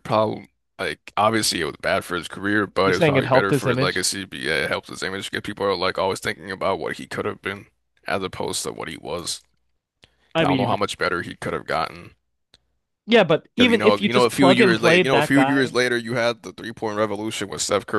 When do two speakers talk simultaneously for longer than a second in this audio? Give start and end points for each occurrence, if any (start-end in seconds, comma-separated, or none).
2.9-4.1, 13.6-15.8